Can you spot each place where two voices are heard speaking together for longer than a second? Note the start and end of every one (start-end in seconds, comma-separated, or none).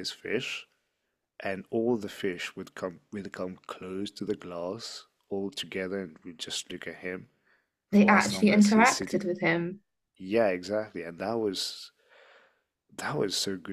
7.9-9.2